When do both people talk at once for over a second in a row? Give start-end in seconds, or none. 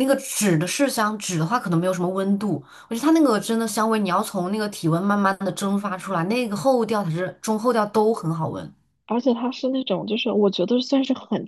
none